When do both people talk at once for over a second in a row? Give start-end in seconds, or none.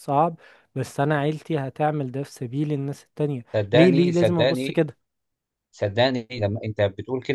3.5-4.8